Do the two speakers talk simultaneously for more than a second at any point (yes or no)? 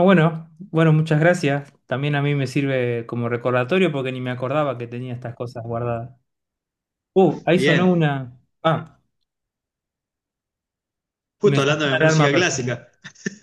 yes